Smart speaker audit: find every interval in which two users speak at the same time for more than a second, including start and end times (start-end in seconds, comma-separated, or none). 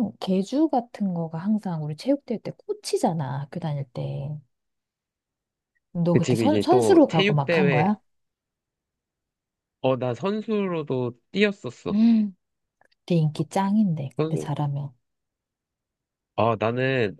6.1-7.9